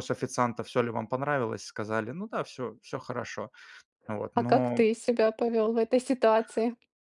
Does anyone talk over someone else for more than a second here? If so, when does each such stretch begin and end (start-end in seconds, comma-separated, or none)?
none